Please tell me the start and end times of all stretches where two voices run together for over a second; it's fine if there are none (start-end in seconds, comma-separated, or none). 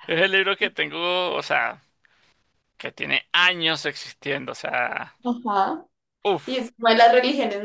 none